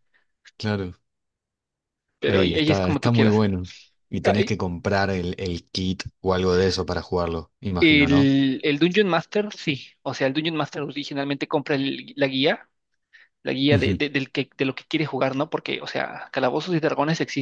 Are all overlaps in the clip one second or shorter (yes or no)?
no